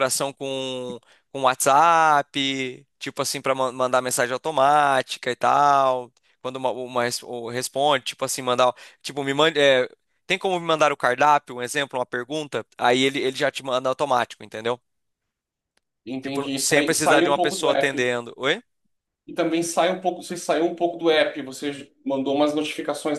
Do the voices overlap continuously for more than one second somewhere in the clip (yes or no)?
yes